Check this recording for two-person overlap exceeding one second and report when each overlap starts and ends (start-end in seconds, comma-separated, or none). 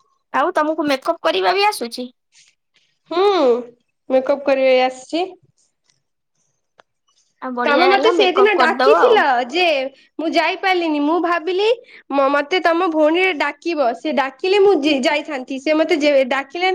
7.7-9.2